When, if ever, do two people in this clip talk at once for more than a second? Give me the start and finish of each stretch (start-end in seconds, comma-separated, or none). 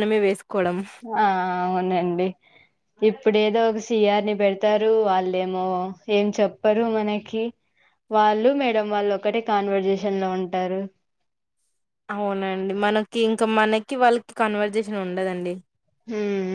none